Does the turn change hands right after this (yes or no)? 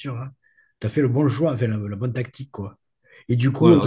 no